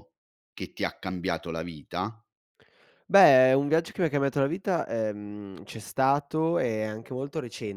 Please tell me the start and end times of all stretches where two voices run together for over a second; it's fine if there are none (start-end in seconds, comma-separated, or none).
none